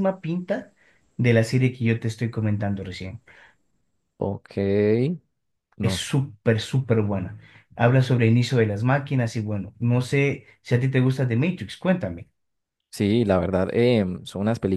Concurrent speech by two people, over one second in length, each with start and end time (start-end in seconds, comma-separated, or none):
none